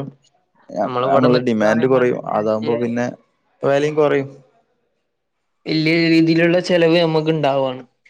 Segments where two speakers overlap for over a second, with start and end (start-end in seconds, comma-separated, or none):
1.1-2.8